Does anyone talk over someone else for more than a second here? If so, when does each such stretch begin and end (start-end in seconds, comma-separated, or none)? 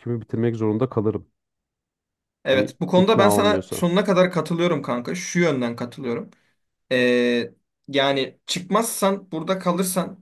2.5-3.8